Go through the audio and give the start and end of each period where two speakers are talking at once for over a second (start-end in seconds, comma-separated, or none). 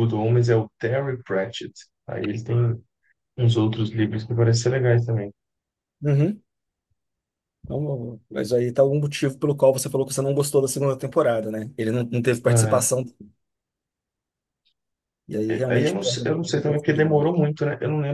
15.5-17.4